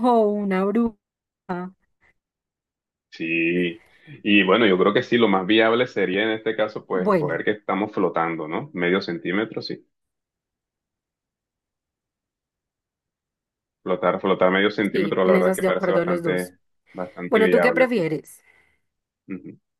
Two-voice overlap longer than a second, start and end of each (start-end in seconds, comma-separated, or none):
14.9-16.5